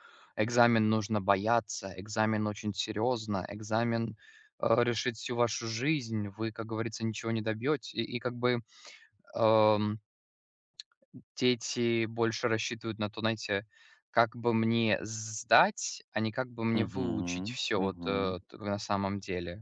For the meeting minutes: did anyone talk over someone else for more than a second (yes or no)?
yes